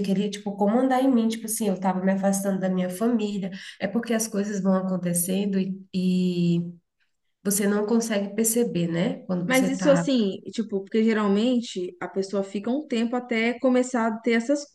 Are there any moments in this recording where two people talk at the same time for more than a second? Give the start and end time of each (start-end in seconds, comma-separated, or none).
none